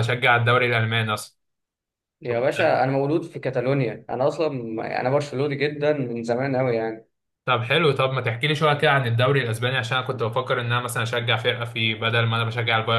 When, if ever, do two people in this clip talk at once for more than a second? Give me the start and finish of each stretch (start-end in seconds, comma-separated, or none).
none